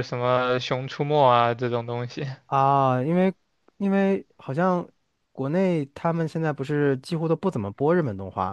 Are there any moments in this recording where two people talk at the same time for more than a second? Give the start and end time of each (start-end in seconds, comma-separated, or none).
none